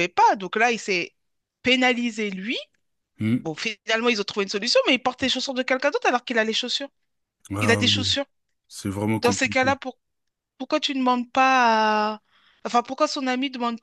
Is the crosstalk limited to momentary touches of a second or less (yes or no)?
yes